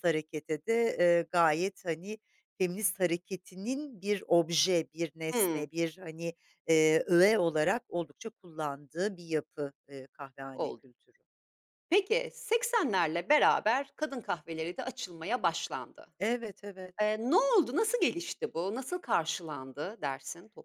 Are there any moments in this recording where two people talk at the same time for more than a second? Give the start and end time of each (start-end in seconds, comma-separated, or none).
none